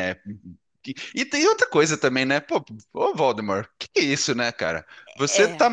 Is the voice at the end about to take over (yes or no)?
no